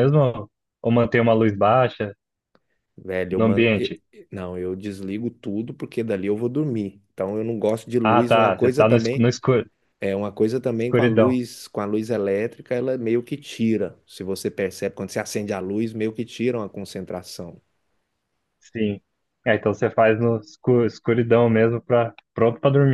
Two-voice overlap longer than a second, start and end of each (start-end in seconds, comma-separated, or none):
8.0-9.3